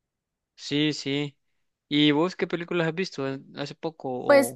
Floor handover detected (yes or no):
yes